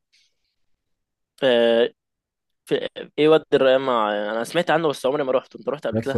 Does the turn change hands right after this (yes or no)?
yes